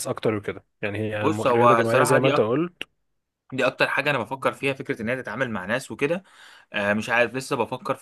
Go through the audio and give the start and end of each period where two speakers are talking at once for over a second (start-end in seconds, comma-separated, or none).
1.1-2.5